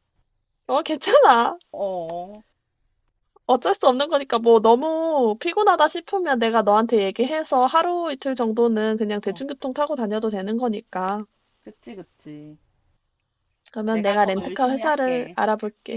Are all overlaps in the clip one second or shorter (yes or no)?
no